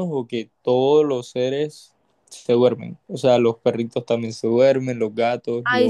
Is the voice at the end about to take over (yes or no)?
yes